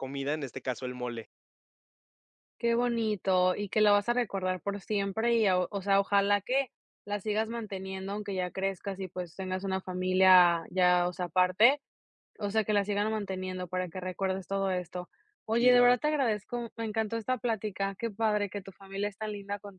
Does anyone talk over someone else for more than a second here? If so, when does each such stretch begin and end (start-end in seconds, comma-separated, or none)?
none